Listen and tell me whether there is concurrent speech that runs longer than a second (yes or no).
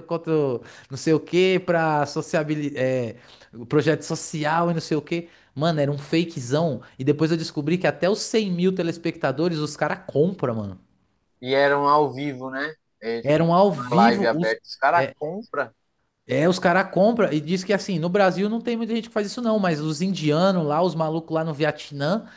yes